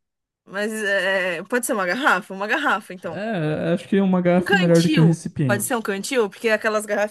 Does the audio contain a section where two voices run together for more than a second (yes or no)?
yes